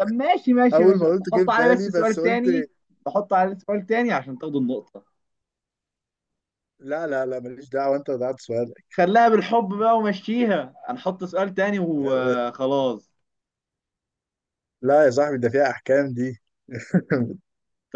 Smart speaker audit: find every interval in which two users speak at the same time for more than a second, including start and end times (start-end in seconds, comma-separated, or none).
0.7-2.4